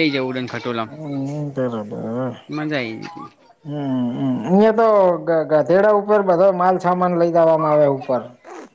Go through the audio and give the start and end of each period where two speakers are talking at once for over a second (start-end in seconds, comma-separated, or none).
none